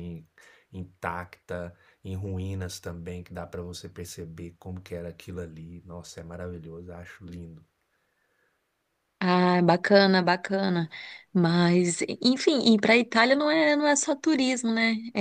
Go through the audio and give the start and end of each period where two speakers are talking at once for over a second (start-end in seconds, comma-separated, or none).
none